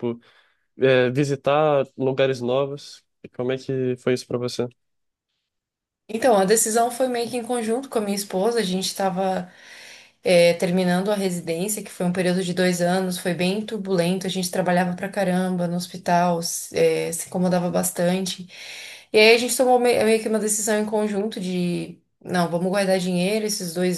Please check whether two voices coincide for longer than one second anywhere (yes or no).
no